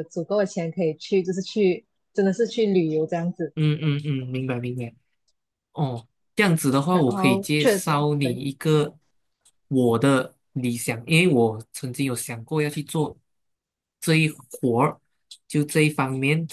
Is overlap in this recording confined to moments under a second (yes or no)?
no